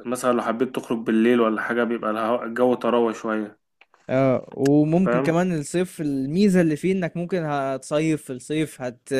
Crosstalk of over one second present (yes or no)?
no